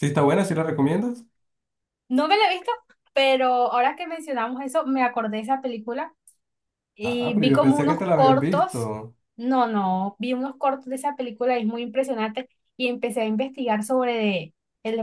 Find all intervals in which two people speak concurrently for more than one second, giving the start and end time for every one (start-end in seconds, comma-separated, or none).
7.0-8.9